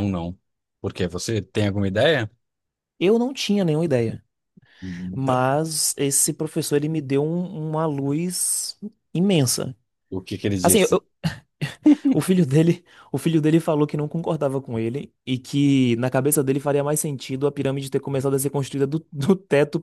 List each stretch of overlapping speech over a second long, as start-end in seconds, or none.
none